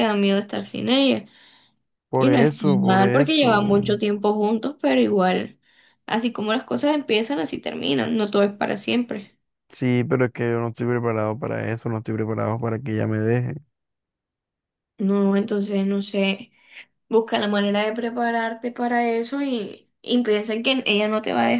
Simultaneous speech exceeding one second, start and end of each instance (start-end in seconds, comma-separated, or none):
2.1-3.5